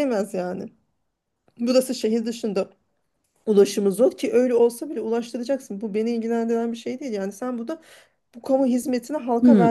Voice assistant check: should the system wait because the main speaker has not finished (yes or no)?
no